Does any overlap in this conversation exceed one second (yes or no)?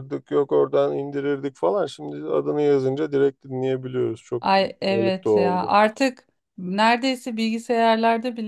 yes